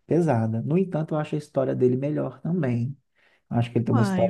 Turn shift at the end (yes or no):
no